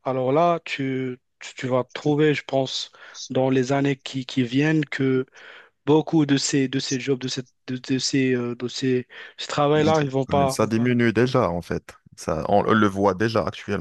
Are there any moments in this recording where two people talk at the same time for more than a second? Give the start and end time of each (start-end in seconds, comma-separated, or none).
none